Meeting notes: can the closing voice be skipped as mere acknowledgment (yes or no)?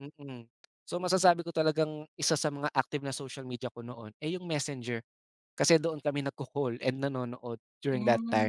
no